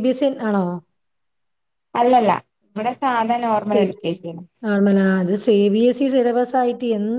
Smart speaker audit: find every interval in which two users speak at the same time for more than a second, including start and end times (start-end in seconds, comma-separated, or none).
none